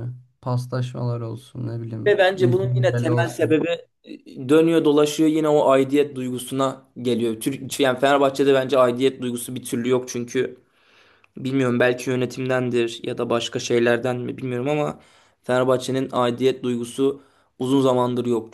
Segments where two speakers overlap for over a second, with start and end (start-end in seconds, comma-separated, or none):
2.1-3.6